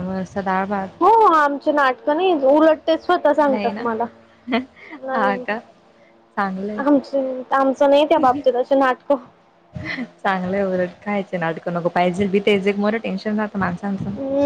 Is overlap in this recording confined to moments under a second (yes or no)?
yes